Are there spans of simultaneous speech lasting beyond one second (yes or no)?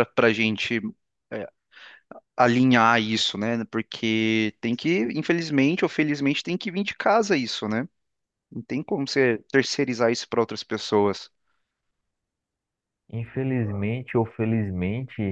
no